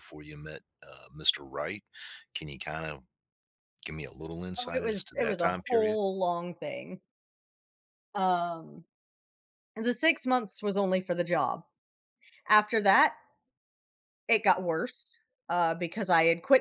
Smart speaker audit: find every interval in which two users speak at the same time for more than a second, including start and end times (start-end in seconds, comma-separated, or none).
4.5-6.0